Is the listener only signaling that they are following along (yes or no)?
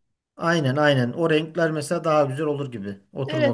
no